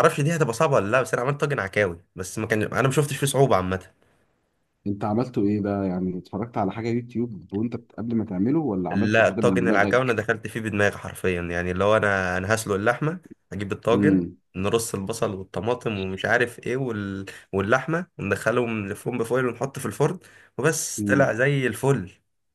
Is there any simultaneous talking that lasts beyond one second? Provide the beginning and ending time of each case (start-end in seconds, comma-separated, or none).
8.9-10.2